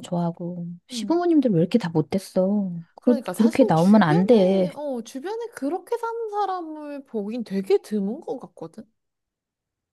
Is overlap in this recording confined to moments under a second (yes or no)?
no